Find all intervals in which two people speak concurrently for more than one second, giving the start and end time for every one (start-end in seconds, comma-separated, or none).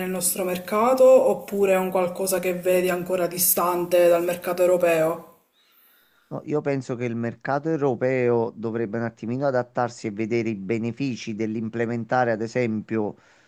none